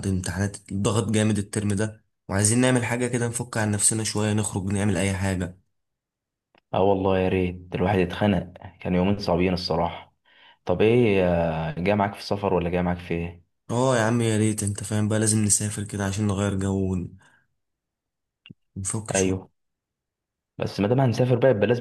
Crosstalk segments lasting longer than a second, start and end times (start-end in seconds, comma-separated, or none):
none